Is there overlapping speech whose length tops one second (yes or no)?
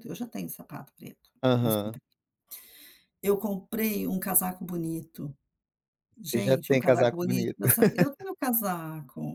yes